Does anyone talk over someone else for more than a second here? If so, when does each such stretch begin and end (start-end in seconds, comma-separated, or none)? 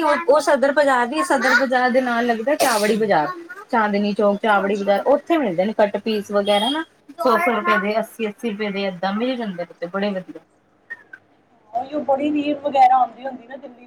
none